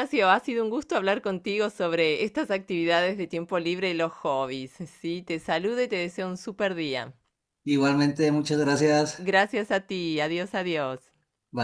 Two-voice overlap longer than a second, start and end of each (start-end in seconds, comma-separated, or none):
none